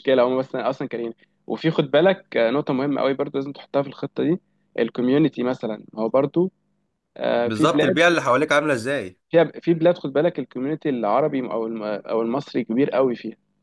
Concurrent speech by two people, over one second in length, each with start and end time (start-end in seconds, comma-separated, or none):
none